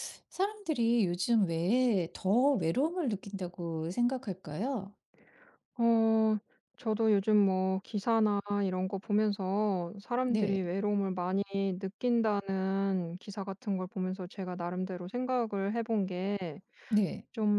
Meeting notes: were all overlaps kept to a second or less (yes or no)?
yes